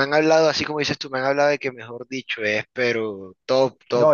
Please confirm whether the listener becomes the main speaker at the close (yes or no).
yes